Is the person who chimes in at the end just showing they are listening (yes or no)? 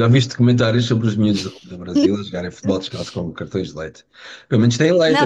no